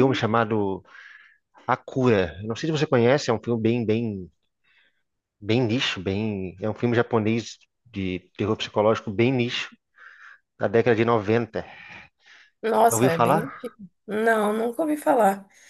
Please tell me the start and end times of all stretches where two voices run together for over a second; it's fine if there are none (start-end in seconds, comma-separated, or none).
none